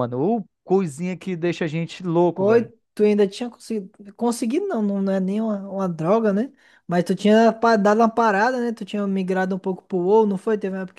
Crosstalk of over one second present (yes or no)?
no